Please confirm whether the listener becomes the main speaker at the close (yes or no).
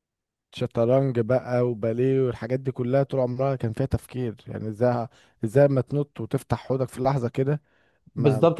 yes